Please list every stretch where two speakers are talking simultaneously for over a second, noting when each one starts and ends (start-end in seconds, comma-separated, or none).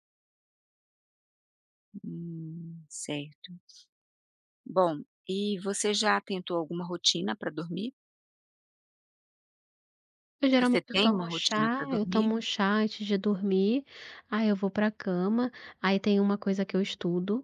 10.6-12.3